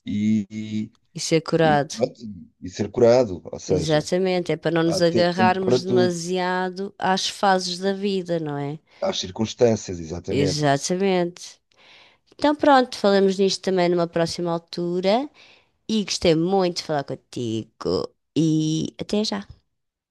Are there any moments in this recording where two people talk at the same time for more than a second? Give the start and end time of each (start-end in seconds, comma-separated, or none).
4.8-6.2